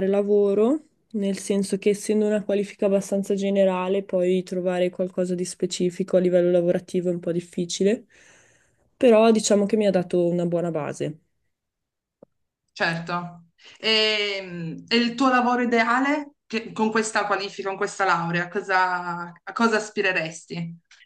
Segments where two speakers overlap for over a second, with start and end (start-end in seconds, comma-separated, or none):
none